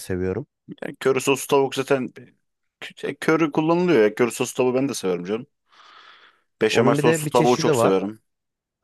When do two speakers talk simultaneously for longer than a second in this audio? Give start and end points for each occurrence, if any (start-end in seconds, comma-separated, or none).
6.7-8.0